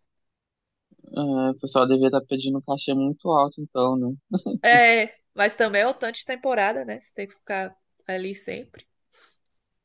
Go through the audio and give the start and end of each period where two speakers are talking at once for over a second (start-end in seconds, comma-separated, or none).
none